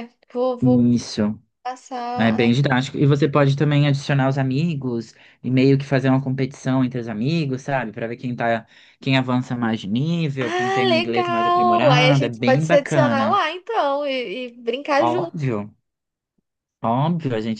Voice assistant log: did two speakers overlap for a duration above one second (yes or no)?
yes